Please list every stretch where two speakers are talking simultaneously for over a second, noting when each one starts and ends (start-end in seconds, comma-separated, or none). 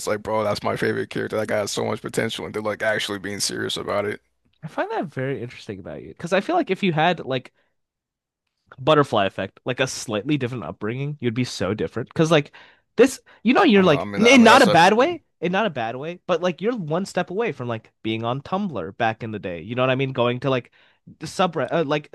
13.7-15.2